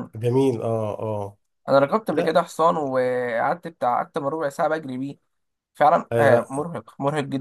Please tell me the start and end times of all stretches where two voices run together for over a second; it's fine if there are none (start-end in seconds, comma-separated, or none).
none